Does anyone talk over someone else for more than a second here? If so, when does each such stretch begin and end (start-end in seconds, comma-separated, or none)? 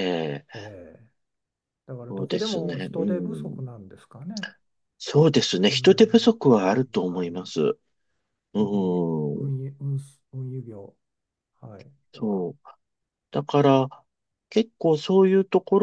2.1-3.6, 5.7-7.4